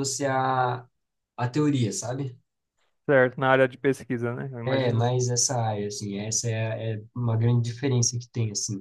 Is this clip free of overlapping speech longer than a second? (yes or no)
yes